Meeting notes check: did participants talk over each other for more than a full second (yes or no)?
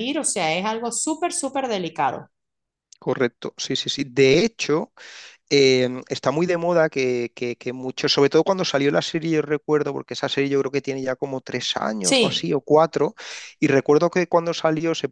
no